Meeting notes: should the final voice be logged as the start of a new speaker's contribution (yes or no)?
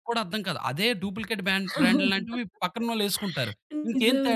yes